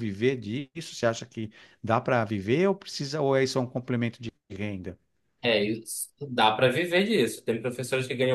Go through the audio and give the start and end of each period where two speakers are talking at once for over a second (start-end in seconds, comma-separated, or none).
none